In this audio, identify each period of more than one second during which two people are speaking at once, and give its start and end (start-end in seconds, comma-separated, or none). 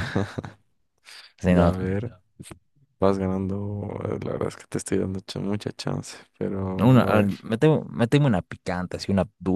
none